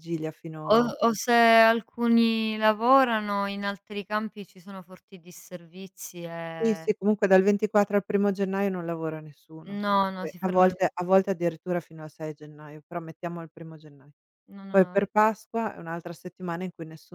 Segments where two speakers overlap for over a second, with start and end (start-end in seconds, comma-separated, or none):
9.7-11.3